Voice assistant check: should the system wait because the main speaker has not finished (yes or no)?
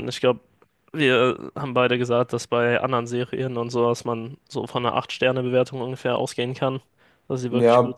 no